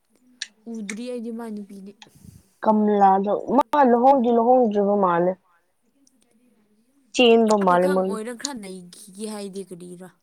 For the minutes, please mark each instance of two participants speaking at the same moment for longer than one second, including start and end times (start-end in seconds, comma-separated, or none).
none